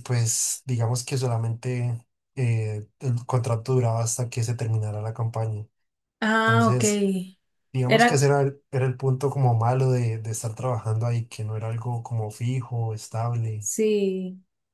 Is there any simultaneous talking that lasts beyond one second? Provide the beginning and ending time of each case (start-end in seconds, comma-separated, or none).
none